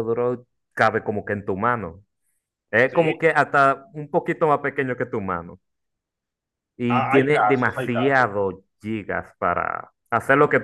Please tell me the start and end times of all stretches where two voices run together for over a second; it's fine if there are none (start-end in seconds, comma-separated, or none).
6.9-8.3